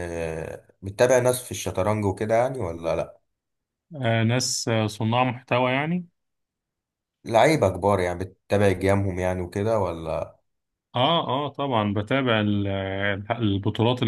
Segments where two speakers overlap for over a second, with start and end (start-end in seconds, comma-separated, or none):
none